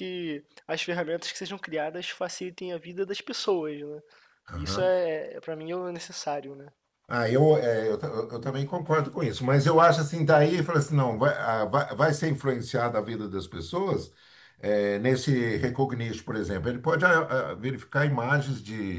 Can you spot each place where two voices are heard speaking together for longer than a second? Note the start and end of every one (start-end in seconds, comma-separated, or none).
none